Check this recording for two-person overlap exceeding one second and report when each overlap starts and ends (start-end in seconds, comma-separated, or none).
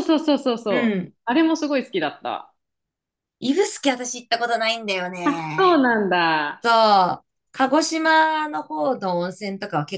none